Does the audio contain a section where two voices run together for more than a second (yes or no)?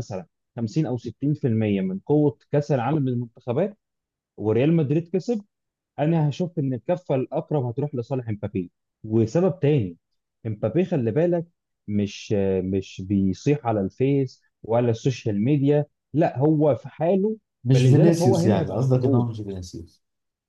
yes